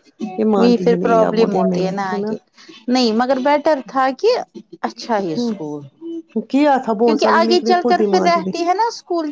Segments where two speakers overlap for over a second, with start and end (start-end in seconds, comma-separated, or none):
0.6-1.9, 7.0-8.6